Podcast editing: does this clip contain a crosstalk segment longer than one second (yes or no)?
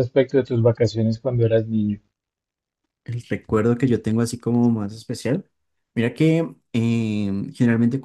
no